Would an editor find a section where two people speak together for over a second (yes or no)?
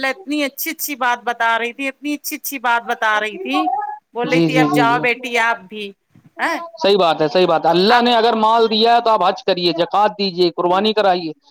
no